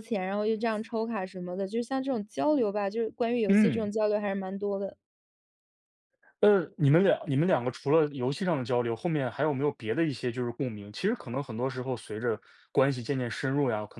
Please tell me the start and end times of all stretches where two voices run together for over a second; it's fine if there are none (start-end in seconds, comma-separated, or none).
none